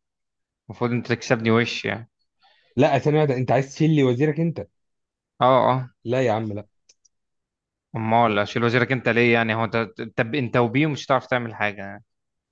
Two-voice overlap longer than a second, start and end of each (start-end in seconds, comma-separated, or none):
none